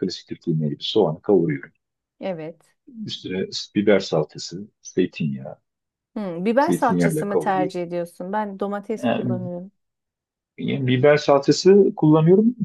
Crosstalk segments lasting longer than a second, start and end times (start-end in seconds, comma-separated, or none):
6.6-7.8